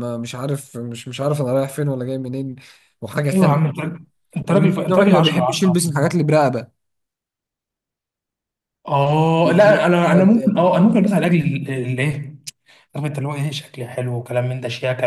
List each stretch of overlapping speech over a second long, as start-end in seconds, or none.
4.5-5.8